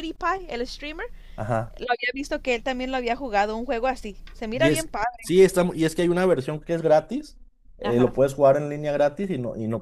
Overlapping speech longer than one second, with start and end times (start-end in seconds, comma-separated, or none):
none